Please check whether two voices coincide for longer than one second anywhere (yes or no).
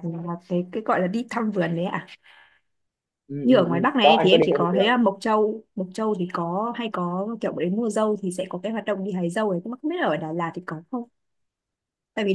yes